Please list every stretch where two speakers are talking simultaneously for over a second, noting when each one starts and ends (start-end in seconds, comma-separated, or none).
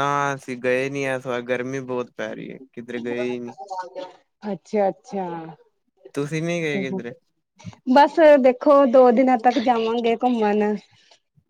none